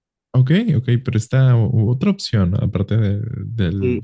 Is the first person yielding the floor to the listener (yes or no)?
yes